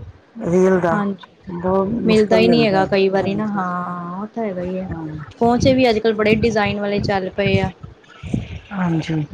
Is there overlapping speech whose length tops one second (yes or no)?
no